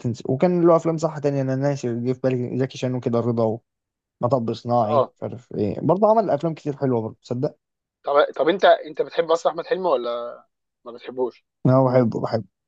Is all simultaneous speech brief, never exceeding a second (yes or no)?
yes